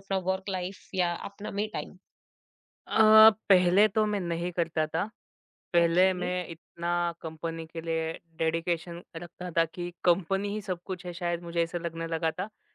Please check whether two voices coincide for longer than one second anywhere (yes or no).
no